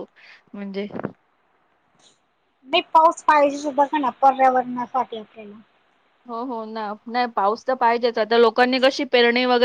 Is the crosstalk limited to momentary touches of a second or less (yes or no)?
yes